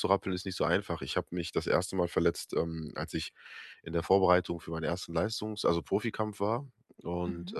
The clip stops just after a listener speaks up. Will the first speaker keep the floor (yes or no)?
yes